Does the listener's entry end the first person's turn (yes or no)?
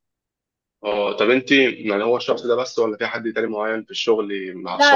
yes